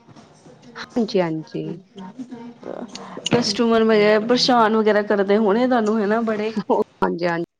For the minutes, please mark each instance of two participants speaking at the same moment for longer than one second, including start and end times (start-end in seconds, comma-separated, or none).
none